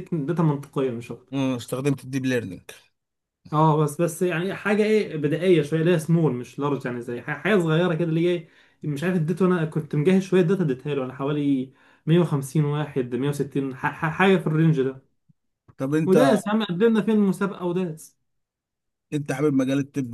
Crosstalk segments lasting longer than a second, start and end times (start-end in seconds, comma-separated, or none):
none